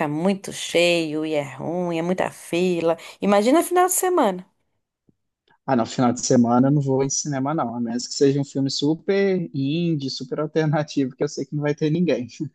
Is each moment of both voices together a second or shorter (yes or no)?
yes